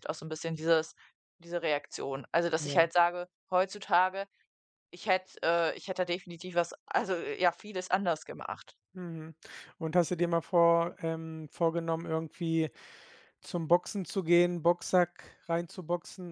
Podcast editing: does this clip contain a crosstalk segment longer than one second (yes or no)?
no